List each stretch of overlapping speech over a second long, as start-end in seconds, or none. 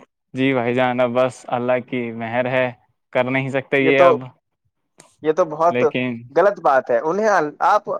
none